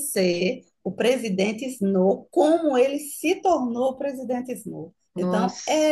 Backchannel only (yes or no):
yes